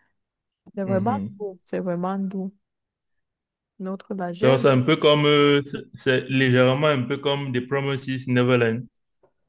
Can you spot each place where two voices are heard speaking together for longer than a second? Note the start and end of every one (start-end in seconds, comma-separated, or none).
none